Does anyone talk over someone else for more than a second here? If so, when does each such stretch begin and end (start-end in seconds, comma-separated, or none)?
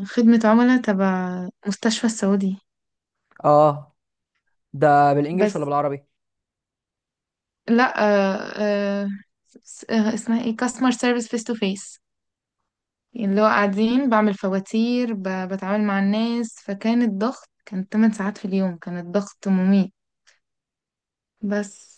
none